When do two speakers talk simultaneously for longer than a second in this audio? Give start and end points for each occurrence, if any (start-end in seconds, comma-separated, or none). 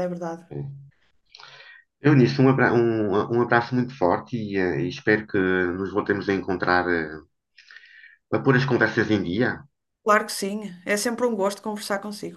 none